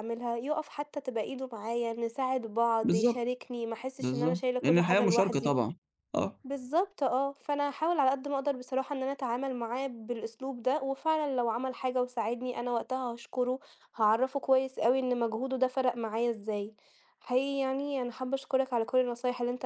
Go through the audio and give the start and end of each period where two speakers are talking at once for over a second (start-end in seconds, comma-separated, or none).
4.0-5.6